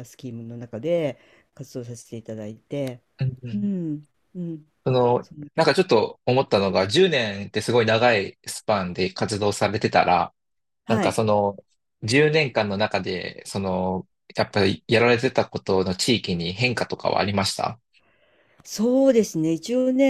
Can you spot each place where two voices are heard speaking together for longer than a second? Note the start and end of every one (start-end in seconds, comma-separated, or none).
none